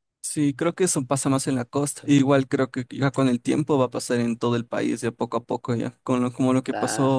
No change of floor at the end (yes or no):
yes